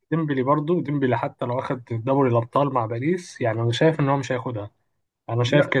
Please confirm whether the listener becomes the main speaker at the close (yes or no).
no